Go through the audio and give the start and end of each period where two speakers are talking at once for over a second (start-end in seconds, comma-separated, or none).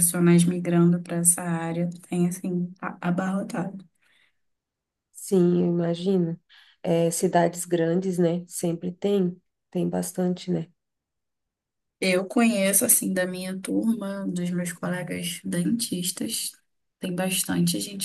none